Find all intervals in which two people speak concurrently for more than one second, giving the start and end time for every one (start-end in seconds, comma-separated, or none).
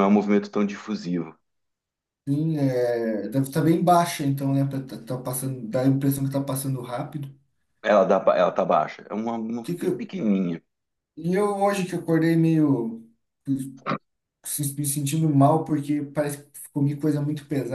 none